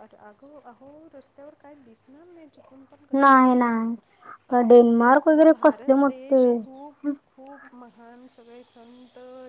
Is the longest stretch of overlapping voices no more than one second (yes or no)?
no